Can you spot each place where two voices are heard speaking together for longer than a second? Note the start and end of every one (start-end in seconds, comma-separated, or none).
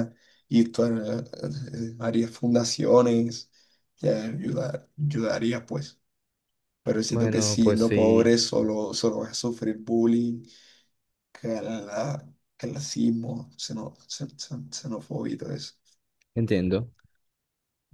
7.1-8.3